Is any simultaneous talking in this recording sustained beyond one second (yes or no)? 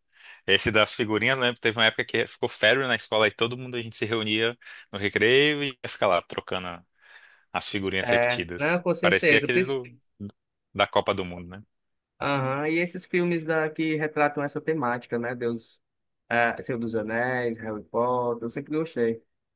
yes